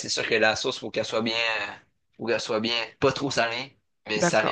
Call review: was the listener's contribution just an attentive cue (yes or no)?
no